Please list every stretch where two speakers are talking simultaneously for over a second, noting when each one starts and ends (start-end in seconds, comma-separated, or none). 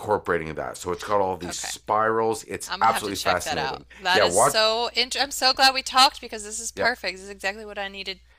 2.6-4.6